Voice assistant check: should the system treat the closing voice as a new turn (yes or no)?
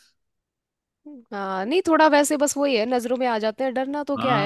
yes